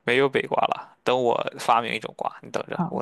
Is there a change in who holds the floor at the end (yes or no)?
yes